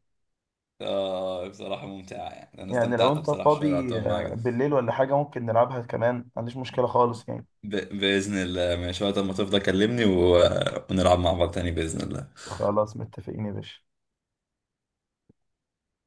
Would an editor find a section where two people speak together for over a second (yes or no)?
yes